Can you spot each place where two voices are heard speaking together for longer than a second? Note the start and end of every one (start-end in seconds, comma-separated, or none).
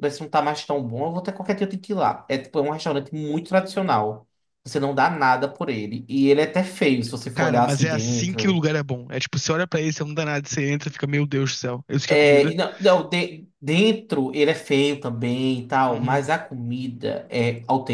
7.3-8.6